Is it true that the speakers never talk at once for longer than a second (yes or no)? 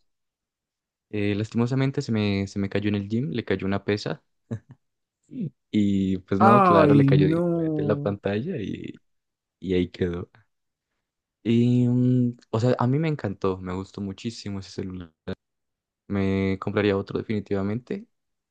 no